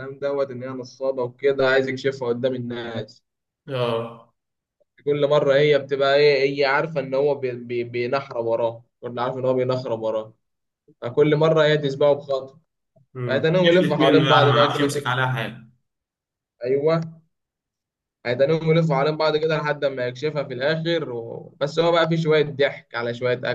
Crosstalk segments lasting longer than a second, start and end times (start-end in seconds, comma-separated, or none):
13.3-15.1